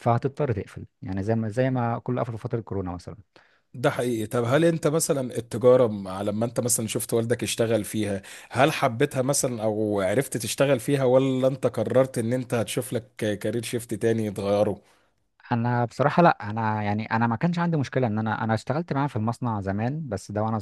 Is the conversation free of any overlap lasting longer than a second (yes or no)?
yes